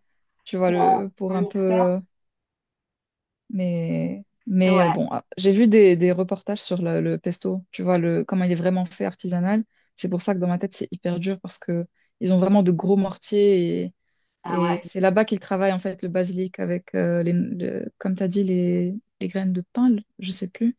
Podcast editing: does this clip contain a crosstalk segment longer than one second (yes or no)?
yes